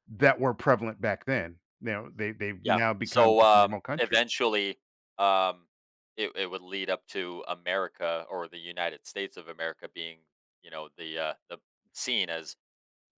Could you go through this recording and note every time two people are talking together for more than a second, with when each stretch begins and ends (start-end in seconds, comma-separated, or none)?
2.6-4.2